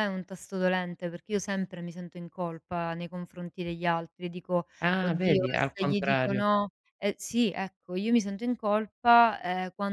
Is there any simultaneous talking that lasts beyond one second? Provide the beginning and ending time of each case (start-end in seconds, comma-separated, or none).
4.8-6.4